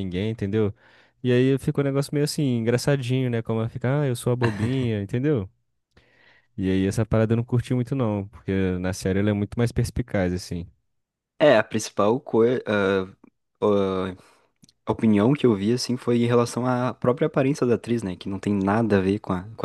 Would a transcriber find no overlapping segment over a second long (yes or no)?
yes